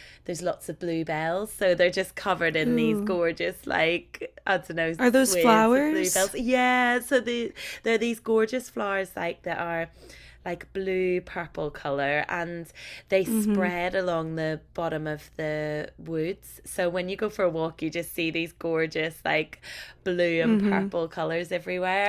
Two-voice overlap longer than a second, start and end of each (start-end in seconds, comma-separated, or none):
5.0-6.3